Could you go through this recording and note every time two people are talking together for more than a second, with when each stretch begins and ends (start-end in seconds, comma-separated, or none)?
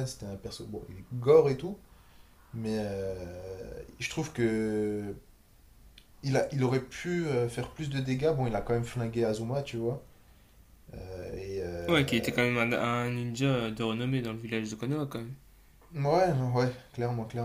none